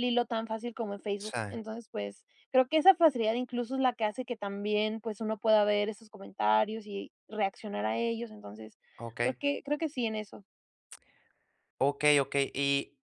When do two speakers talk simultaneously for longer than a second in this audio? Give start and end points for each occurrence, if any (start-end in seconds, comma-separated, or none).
none